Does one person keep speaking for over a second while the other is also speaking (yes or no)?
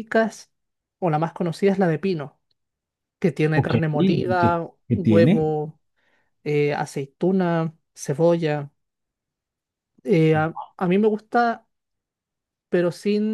yes